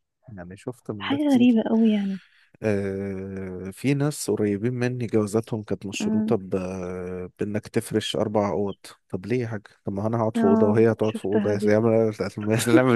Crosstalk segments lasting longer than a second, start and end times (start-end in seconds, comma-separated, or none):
10.3-11.7